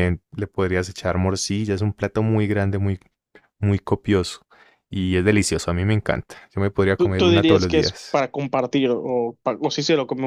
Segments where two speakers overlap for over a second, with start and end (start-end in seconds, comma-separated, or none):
7.0-8.2